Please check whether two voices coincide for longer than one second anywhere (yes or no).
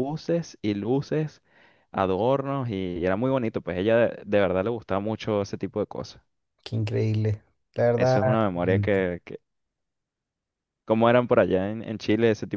no